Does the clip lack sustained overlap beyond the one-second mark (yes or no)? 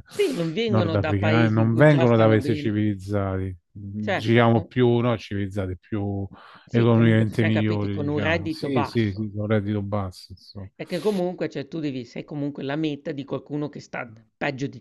no